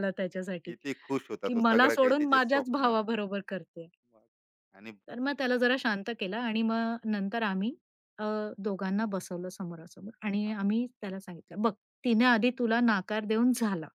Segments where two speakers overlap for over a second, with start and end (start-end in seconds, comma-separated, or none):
1.4-3.0